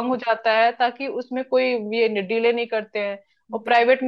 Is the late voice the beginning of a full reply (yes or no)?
no